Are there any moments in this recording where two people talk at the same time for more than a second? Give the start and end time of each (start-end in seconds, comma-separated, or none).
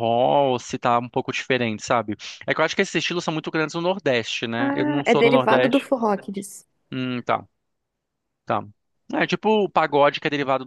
4.6-5.9